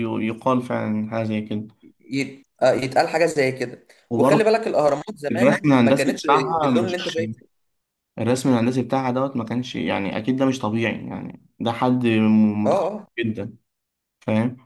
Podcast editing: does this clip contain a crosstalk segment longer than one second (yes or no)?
yes